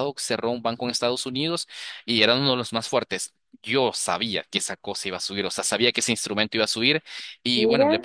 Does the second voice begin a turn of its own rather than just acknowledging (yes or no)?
no